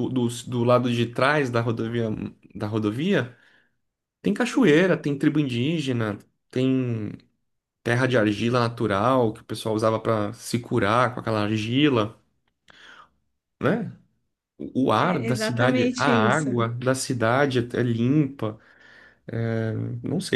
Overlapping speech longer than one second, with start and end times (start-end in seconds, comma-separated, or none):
15.0-16.5